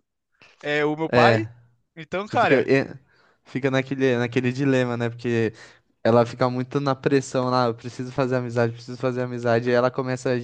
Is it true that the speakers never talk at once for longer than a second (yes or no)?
yes